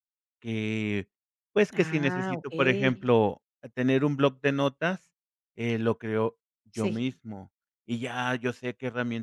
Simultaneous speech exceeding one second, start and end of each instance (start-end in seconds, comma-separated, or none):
1.7-3.1